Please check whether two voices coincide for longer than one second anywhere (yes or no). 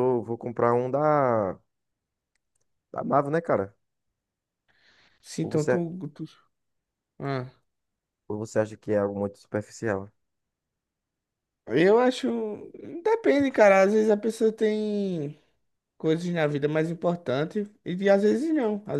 no